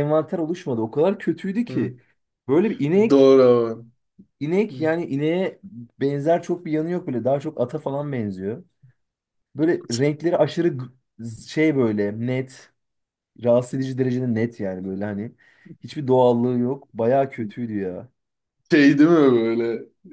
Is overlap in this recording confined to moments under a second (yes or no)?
yes